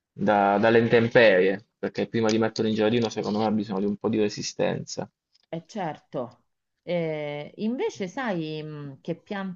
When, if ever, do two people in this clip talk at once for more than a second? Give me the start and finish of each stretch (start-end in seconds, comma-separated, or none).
none